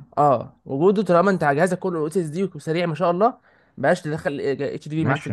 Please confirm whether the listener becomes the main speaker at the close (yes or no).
yes